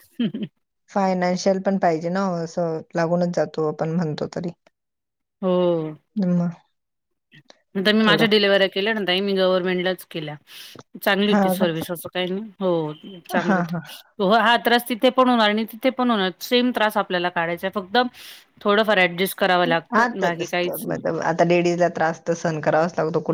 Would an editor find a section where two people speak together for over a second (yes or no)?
no